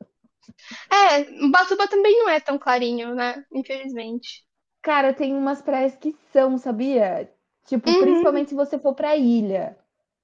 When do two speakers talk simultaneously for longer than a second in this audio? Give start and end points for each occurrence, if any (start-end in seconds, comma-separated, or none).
none